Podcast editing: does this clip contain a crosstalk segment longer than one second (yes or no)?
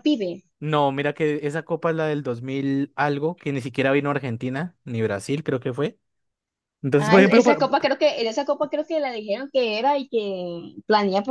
no